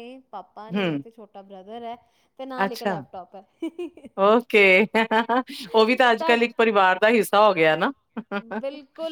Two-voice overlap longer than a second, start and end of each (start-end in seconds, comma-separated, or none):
none